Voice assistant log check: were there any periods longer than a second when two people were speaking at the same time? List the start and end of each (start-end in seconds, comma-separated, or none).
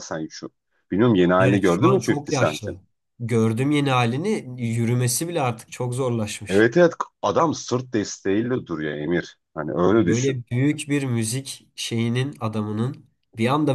1.4-2.8